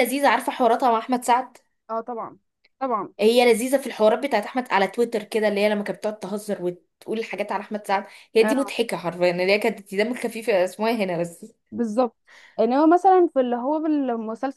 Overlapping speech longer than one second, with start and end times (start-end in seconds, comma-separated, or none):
none